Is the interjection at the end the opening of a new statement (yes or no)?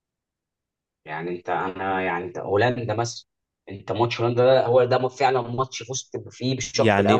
yes